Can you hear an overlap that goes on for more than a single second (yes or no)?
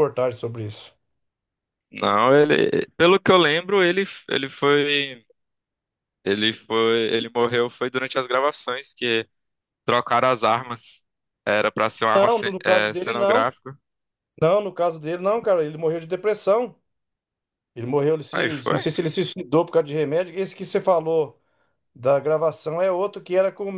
yes